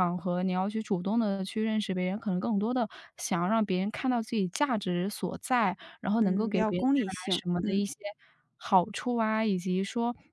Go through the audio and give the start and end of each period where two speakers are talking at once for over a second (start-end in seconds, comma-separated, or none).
6.2-7.8